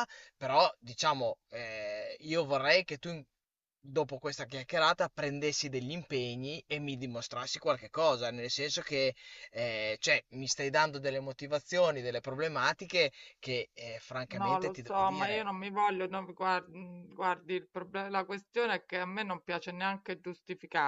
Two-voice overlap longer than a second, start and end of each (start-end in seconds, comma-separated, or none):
14.3-15.5